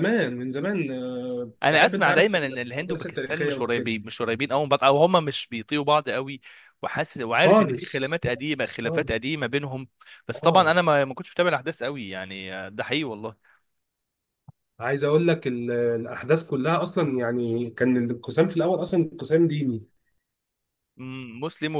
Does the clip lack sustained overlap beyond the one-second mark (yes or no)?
no